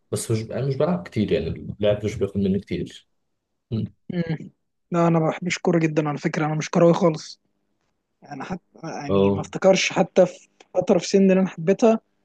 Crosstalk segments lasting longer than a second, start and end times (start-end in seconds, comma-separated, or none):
none